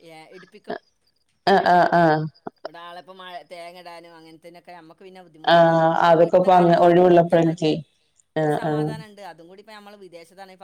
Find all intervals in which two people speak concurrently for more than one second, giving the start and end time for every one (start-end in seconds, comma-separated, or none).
5.5-7.7